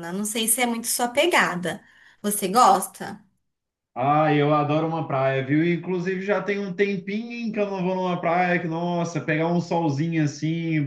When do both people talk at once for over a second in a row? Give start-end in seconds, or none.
none